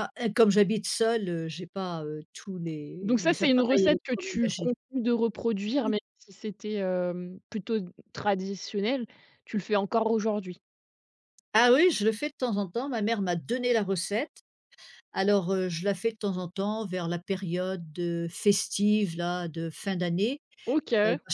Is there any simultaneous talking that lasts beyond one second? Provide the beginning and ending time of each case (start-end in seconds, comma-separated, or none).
3.0-4.7